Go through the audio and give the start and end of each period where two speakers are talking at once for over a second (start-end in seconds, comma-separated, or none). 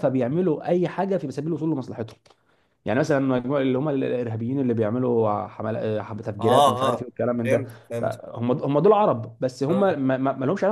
6.4-8.2